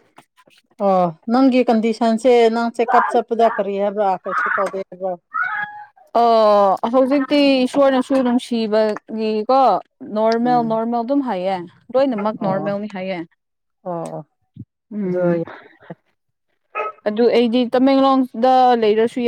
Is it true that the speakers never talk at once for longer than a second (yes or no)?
yes